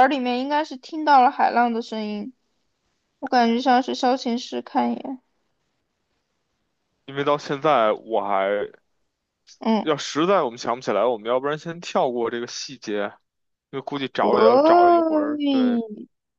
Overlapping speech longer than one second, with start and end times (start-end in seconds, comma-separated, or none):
14.2-15.8